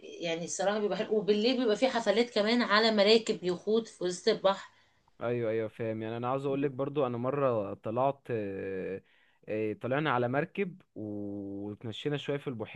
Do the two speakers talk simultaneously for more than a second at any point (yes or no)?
no